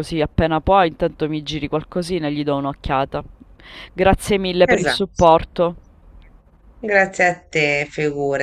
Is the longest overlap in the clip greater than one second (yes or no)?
no